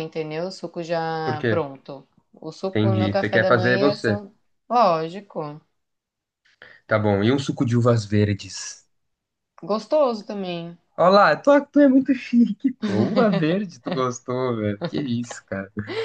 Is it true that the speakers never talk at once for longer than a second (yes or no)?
no